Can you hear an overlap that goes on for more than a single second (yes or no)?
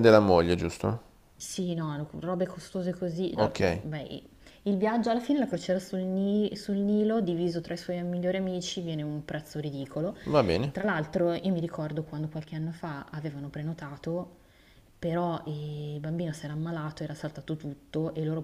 no